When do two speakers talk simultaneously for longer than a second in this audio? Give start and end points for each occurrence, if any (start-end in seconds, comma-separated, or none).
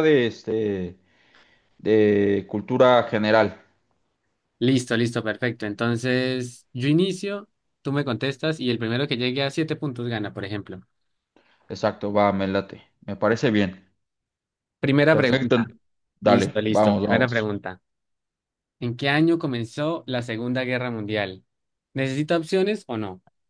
16.2-17.5